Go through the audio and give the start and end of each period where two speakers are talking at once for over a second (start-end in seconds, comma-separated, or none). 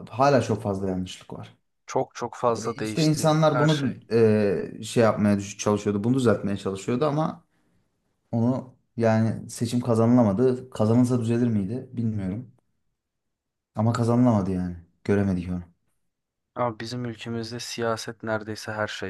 2.5-4.0